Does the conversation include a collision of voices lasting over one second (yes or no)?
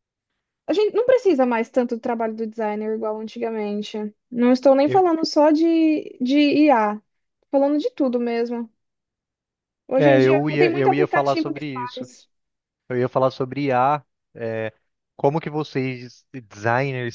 yes